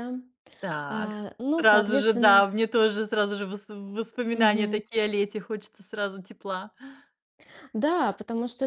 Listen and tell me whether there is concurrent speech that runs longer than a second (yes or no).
yes